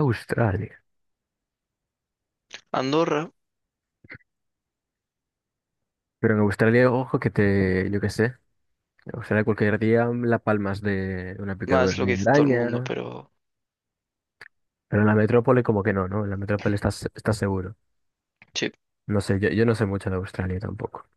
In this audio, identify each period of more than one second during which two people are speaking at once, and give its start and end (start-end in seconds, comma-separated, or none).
11.7-12.9